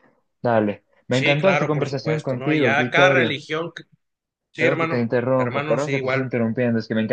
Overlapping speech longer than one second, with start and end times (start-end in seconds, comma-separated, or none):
1.1-3.4, 4.5-6.3